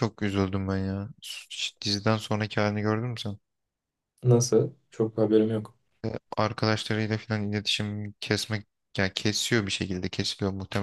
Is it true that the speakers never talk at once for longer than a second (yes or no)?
yes